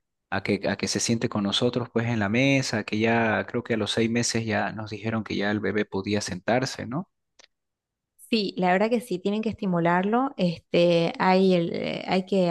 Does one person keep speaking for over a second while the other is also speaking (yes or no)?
no